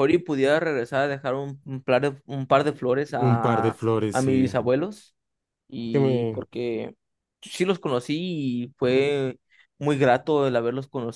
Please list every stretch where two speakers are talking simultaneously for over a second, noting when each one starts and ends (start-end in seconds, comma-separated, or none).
3.2-4.6